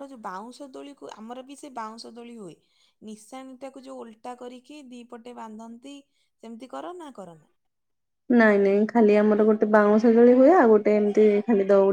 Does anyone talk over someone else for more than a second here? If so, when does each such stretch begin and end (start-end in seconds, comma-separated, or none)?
none